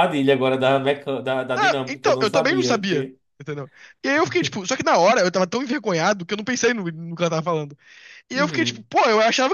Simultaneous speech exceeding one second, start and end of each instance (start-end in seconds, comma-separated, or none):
1.5-3.2